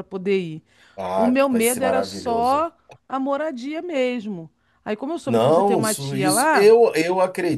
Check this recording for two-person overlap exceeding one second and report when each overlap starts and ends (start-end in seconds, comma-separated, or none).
1.1-2.6, 5.2-6.8